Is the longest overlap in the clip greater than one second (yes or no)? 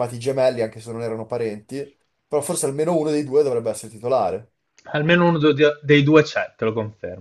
no